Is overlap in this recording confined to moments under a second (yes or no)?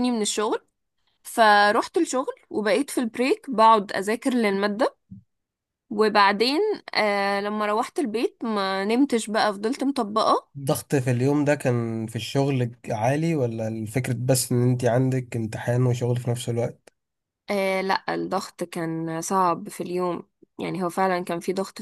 yes